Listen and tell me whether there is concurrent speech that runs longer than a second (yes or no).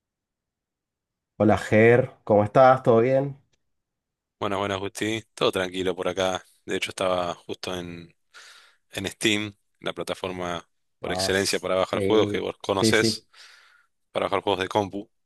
yes